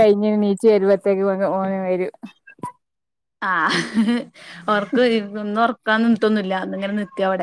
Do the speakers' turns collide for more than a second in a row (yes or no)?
no